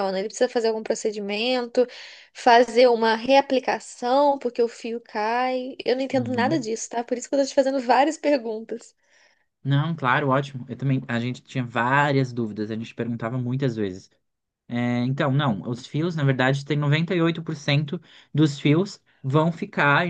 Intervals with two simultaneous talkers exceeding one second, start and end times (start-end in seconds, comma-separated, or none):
none